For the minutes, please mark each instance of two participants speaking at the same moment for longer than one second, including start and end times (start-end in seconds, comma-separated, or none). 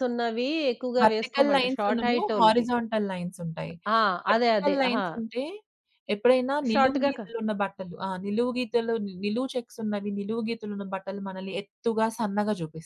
1.0-2.7